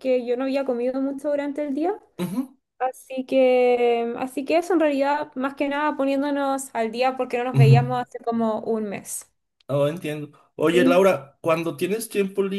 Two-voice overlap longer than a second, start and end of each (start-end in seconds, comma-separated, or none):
none